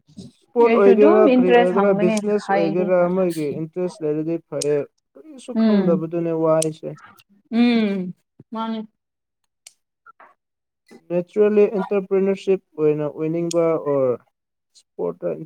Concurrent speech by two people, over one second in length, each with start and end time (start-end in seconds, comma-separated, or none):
0.7-2.9